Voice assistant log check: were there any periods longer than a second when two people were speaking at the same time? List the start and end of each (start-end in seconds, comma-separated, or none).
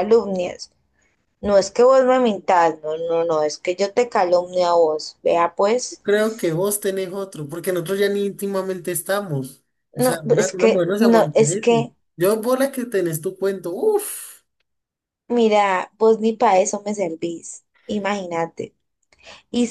9.9-11.9